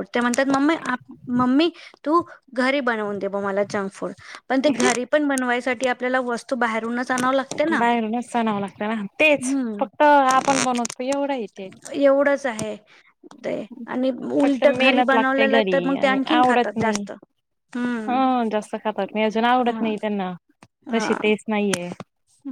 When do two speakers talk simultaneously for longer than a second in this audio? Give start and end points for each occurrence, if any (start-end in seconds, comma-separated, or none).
14.4-17.1